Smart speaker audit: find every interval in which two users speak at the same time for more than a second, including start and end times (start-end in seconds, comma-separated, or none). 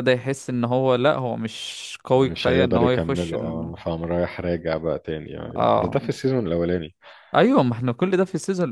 2.1-3.7